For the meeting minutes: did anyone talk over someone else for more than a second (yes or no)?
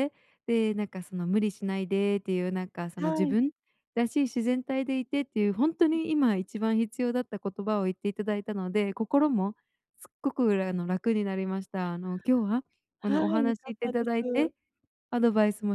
yes